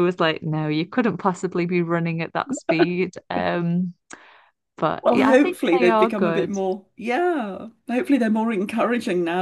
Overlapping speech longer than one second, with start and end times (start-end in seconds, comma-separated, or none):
5.0-6.5